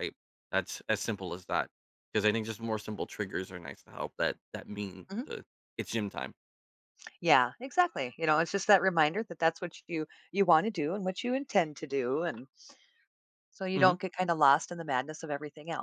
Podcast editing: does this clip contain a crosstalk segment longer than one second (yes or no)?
no